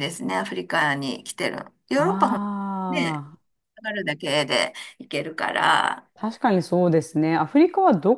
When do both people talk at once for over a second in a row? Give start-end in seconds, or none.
none